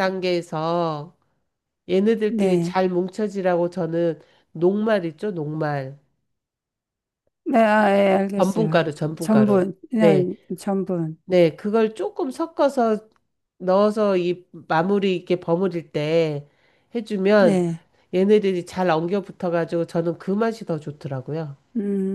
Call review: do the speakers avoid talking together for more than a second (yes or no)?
no